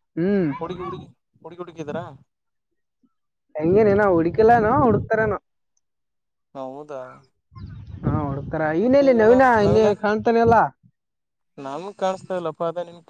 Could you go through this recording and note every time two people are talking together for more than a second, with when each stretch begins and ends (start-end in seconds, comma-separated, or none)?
none